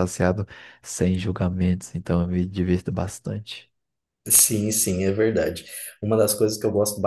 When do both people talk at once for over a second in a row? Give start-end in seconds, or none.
none